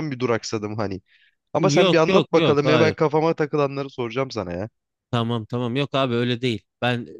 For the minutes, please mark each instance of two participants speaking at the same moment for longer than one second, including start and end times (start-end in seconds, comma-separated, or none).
1.6-2.9